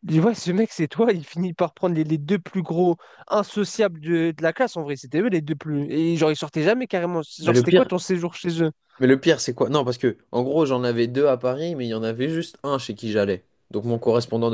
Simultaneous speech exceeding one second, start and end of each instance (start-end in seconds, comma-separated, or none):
none